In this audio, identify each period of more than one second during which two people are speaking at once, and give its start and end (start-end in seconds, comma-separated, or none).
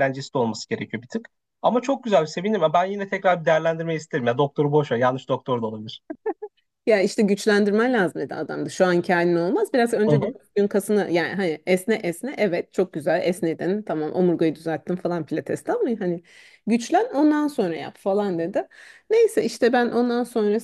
none